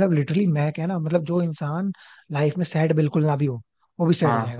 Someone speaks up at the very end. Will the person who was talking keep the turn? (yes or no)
no